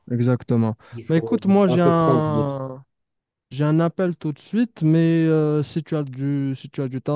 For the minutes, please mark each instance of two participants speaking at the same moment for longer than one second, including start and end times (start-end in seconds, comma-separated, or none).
0.9-2.5